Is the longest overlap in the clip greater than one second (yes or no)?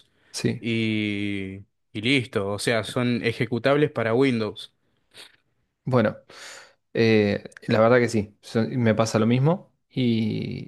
no